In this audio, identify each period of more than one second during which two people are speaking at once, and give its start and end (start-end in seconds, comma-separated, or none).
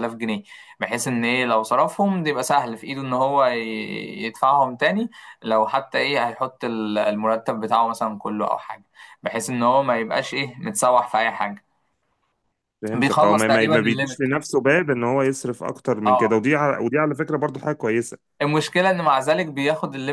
12.9-14.2